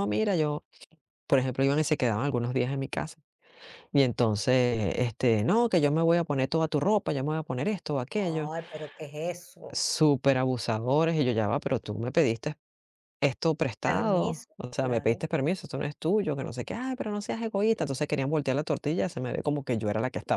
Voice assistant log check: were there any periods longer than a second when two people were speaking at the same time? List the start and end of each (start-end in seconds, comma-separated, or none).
13.8-15.2